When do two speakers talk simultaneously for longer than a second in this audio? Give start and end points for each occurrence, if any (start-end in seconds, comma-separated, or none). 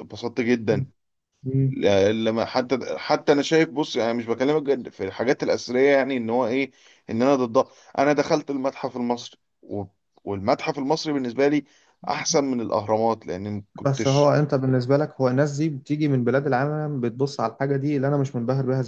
none